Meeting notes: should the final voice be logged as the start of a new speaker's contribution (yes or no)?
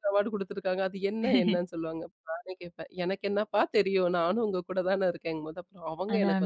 yes